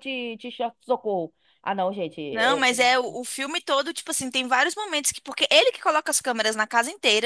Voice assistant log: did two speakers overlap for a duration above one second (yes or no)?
no